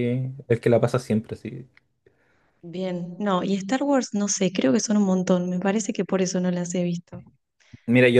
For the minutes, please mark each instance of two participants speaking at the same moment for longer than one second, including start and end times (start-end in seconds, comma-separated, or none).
none